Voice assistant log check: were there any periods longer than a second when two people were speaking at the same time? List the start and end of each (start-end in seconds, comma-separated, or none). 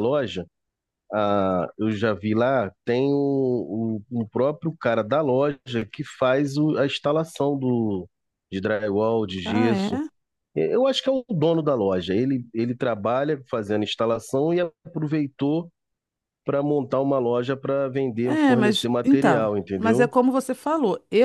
18.2-20.1